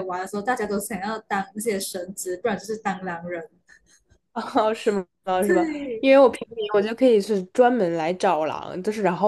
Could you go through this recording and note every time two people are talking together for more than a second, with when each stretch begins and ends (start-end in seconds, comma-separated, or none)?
none